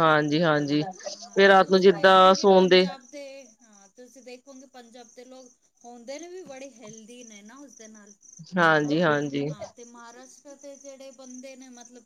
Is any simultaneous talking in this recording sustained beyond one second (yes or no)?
yes